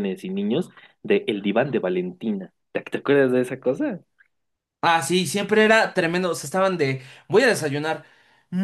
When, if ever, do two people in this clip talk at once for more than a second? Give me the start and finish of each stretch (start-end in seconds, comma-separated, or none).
none